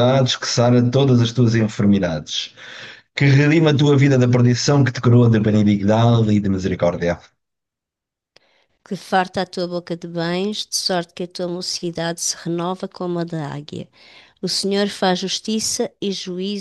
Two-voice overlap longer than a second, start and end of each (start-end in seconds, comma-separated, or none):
none